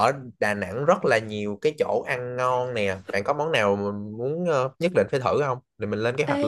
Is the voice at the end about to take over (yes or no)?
yes